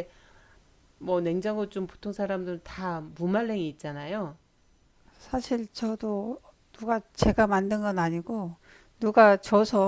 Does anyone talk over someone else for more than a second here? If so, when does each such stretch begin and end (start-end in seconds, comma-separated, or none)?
none